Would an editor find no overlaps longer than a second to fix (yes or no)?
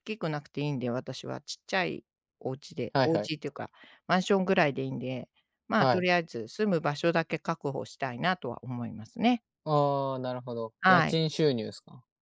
yes